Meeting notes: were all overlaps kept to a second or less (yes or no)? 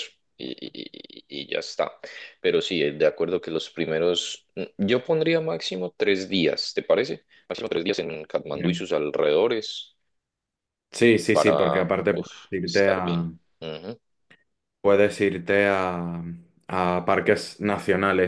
no